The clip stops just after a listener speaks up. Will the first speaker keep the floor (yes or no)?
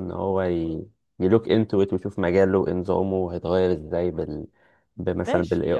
no